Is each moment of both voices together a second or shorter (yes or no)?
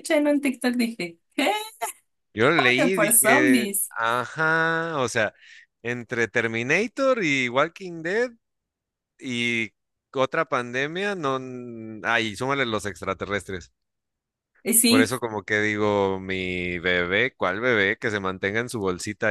no